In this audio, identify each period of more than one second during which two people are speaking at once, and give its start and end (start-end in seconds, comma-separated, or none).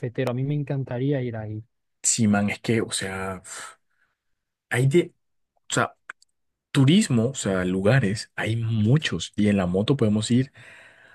none